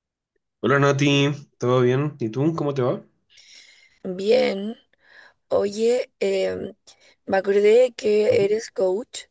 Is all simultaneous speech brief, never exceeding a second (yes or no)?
yes